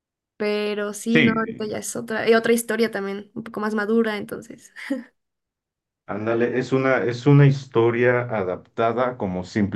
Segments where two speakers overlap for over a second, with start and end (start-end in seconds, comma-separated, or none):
none